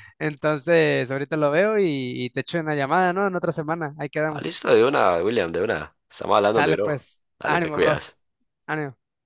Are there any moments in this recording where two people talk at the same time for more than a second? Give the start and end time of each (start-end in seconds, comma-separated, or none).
6.5-8.1